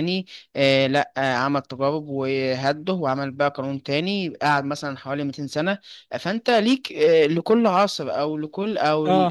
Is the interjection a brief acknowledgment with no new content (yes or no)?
yes